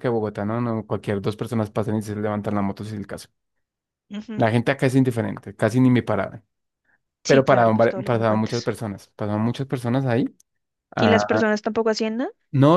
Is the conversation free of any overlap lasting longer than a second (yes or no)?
no